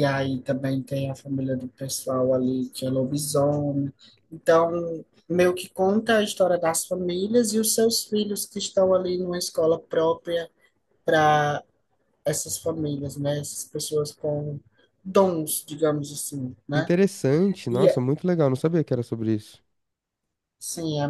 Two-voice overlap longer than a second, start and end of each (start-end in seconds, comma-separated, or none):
none